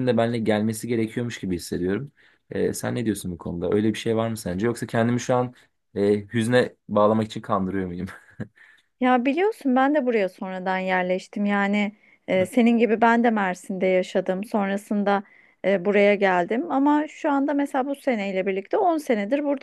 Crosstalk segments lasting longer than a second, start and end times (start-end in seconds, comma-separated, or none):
none